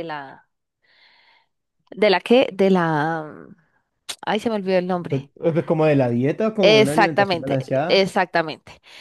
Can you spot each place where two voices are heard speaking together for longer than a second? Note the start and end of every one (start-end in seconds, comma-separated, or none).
6.6-8.0